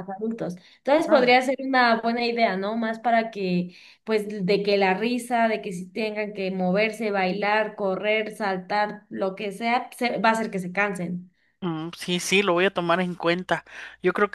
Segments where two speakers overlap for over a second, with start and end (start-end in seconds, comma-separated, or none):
none